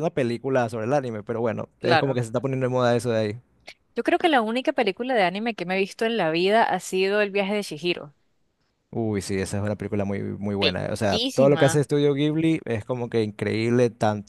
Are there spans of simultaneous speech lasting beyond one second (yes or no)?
yes